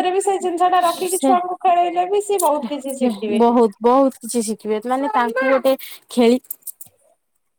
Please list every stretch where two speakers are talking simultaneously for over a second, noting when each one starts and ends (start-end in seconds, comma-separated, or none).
none